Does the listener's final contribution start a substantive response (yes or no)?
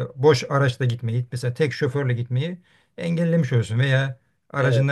no